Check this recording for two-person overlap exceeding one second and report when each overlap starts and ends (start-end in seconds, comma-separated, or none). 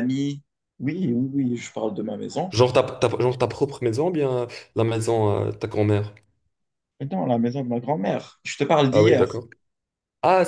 none